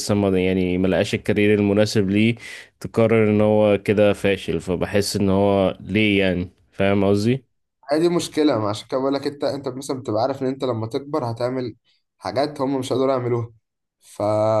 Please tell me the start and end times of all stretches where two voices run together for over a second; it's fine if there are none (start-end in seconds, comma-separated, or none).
none